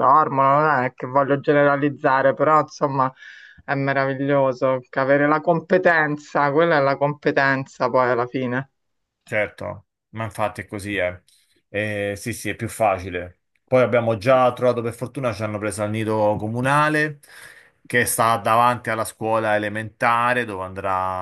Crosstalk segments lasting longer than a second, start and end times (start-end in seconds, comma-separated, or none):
none